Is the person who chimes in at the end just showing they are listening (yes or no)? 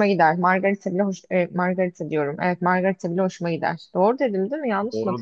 no